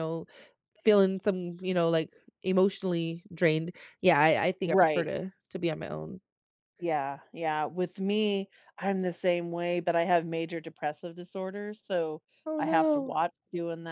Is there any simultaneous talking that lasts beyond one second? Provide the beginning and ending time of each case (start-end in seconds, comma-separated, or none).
none